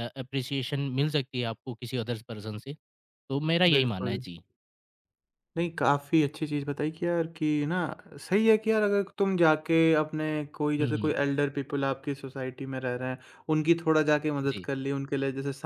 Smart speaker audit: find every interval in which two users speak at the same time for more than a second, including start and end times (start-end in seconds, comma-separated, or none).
none